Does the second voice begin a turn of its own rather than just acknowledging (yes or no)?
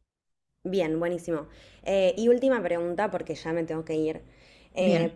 no